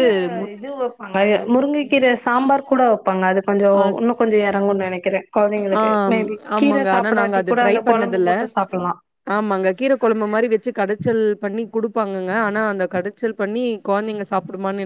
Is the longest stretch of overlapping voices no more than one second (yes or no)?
no